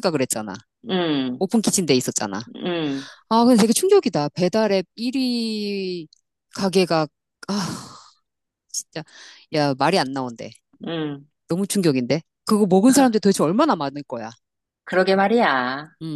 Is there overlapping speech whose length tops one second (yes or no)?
no